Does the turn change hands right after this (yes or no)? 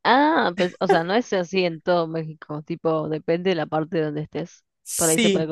yes